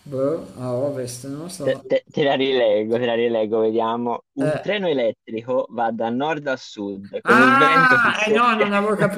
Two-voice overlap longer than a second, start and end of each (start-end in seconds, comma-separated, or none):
7.2-8.7